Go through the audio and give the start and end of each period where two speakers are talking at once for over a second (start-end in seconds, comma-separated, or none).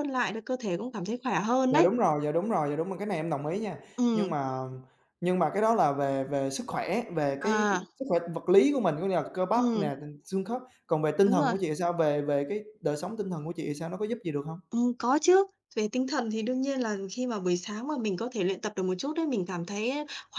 none